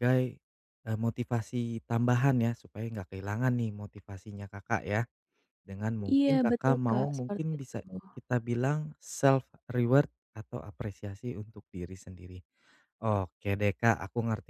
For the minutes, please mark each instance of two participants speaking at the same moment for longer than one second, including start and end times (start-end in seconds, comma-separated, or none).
6.1-7.8